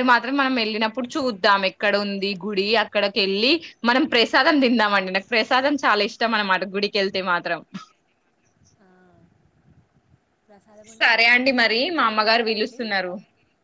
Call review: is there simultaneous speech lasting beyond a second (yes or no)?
yes